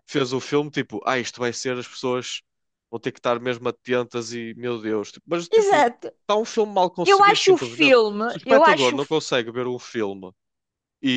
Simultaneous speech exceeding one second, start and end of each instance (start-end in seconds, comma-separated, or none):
7.0-9.2